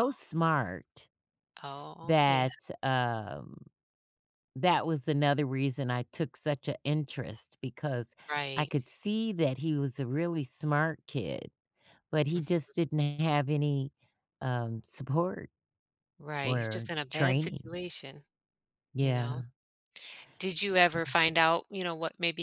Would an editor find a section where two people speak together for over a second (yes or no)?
yes